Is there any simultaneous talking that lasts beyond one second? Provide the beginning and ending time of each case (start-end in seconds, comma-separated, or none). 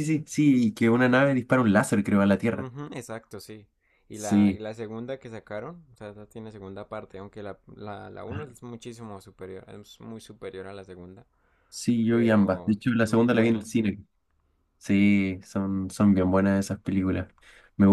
12.1-13.7